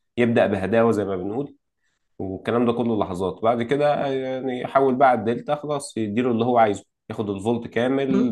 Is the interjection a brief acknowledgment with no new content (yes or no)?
yes